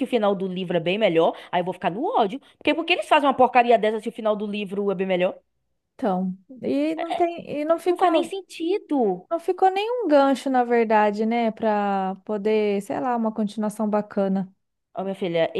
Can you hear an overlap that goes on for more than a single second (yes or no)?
no